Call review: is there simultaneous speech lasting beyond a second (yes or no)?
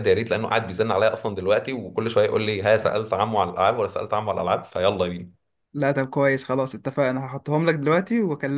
no